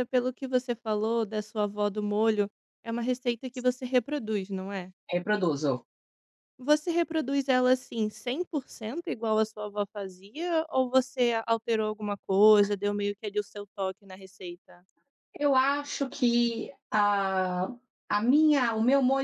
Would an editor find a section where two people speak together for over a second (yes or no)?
no